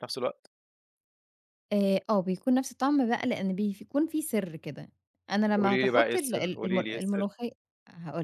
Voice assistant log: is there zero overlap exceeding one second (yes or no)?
no